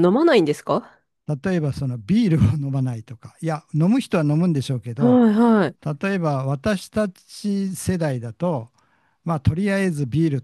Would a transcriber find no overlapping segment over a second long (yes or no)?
yes